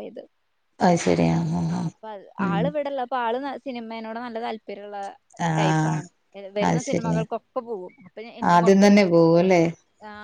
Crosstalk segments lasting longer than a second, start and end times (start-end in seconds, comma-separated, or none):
none